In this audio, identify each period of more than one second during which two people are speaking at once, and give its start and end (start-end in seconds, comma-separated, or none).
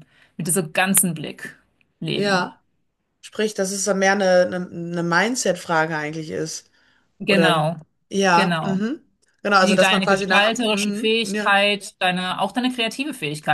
9.6-11.5